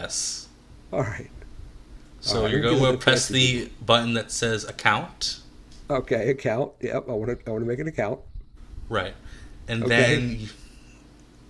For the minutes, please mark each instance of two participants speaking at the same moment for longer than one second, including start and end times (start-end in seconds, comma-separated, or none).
2.2-3.6